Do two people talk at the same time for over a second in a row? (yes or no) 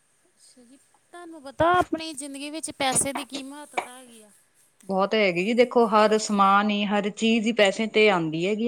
no